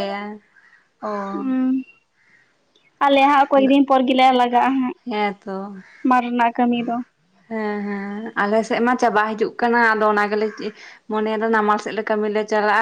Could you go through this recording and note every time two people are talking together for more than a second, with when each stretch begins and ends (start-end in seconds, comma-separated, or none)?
none